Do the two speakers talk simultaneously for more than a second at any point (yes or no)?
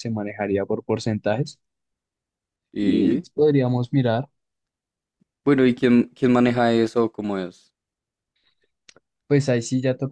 no